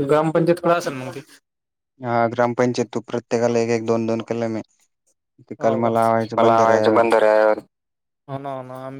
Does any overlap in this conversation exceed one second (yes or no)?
yes